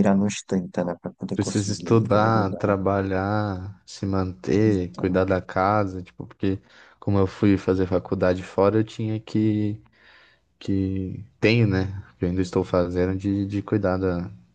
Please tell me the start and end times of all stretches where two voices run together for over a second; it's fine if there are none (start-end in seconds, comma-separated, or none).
1.3-2.7